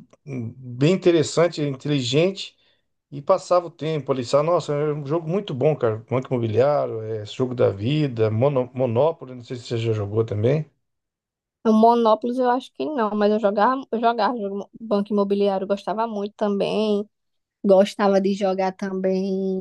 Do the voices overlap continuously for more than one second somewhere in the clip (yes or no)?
no